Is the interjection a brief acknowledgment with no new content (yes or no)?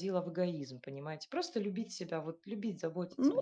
no